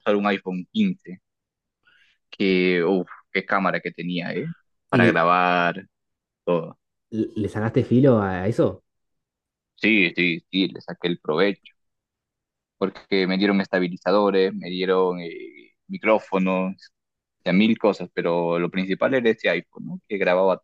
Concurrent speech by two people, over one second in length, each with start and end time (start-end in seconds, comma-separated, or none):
none